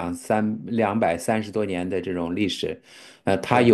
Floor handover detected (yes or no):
no